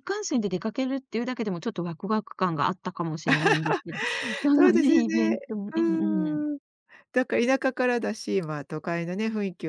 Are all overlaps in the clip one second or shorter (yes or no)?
no